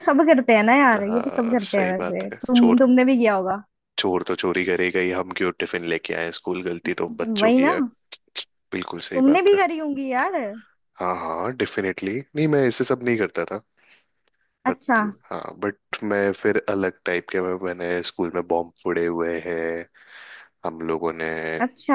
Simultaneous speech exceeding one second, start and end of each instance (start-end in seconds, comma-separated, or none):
1.1-2.8